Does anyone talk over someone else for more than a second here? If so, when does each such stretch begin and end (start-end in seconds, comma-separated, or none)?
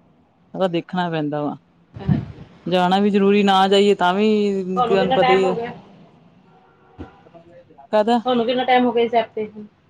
none